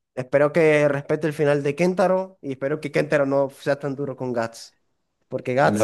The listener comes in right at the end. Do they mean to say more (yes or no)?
yes